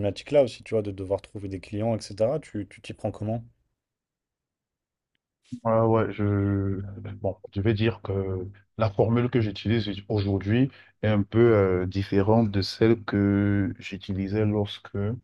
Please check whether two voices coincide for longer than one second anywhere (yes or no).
no